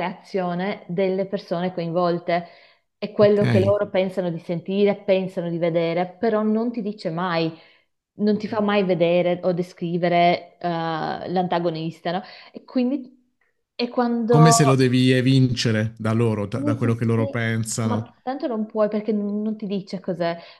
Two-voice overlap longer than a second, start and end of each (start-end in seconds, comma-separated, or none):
16.5-18.1